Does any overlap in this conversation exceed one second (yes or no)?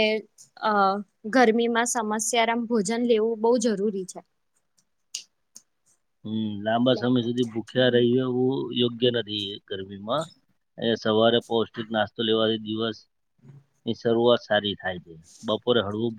no